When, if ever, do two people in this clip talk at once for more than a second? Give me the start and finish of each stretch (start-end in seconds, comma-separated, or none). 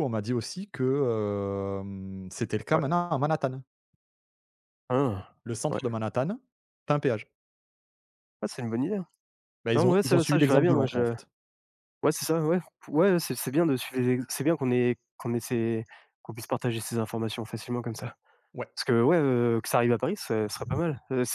9.8-11.1